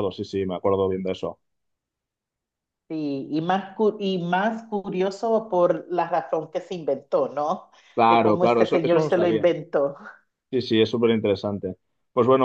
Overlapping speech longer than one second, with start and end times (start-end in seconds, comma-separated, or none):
8.1-9.5